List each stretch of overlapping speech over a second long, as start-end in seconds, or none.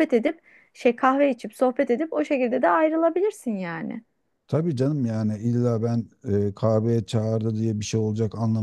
none